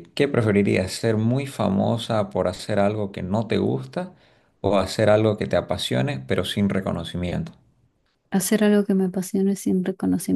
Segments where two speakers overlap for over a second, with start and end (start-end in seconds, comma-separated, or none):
none